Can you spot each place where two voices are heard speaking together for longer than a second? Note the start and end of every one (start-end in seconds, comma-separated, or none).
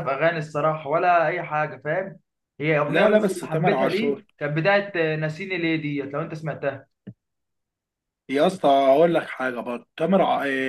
2.9-4.2